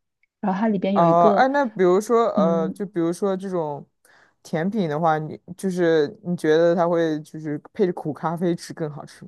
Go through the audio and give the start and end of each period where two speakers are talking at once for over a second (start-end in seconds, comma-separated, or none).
none